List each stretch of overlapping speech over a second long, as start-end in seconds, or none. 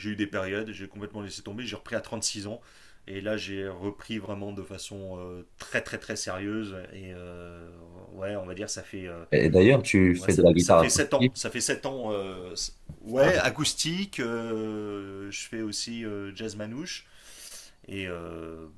10.1-11.5